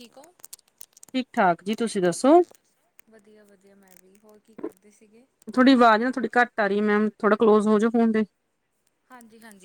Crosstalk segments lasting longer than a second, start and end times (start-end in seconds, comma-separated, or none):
none